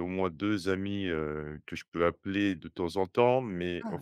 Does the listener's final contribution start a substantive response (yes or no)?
no